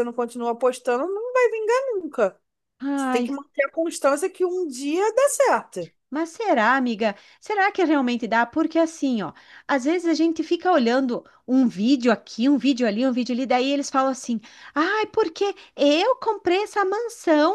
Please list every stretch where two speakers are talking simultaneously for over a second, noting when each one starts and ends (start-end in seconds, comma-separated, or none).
none